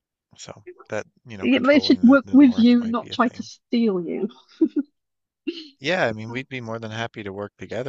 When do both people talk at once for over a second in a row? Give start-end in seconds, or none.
1.4-3.5